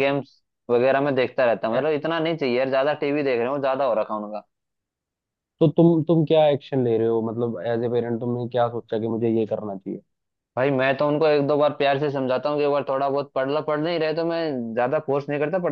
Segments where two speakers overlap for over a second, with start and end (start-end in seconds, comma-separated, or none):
none